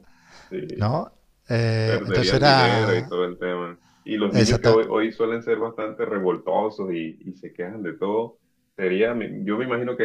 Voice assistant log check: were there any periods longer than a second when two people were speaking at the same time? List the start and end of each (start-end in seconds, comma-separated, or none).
1.9-3.1